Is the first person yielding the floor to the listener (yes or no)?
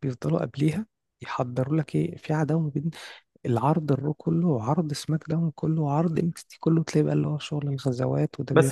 yes